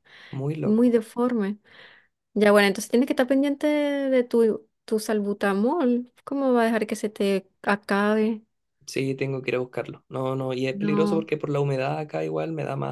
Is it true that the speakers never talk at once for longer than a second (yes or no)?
yes